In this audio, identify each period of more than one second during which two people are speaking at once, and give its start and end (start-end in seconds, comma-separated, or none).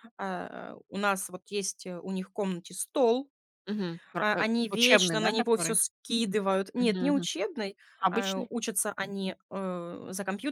4.2-5.8